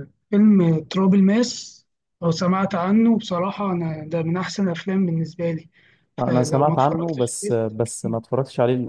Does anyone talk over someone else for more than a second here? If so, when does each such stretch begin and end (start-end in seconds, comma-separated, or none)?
6.2-8.2